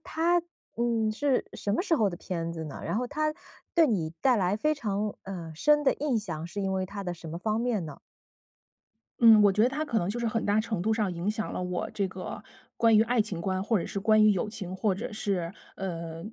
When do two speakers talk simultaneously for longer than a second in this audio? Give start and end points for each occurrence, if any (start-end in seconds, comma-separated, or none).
none